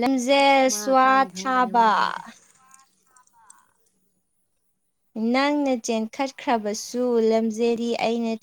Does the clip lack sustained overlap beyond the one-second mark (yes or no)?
no